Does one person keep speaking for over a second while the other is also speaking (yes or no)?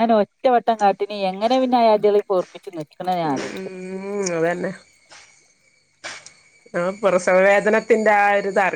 no